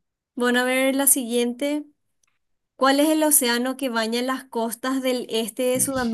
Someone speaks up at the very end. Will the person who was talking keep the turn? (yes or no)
yes